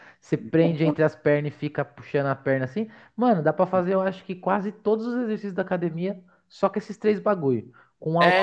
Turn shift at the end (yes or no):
no